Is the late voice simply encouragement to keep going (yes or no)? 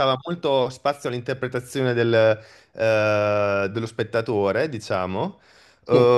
yes